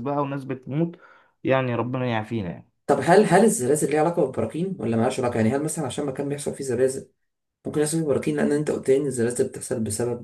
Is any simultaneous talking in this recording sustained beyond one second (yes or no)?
no